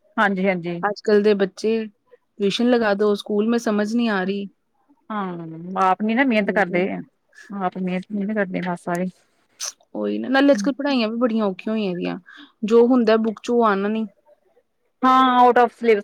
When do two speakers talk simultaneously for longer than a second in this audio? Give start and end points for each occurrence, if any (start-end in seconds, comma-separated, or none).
none